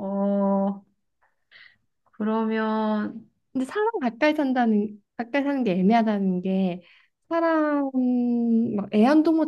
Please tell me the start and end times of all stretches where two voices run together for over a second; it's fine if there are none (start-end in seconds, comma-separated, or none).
none